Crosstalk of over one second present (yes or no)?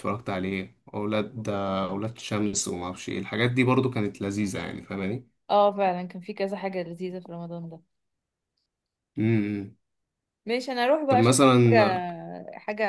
no